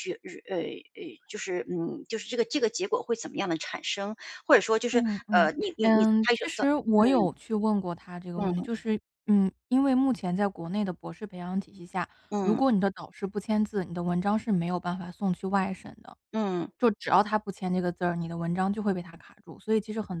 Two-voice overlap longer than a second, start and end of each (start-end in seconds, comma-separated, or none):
4.9-7.3